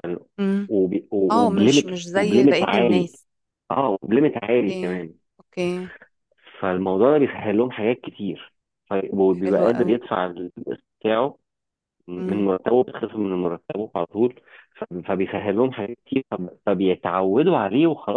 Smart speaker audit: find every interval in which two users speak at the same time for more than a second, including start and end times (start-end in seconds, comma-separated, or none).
1.3-3.1